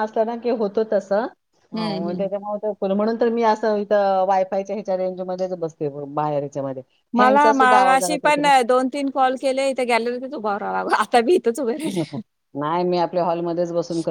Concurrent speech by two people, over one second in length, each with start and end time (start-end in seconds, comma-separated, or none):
7.2-8.4